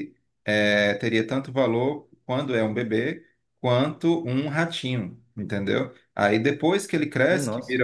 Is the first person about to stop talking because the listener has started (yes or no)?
no